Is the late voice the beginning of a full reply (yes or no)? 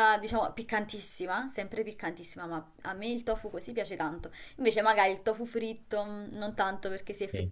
no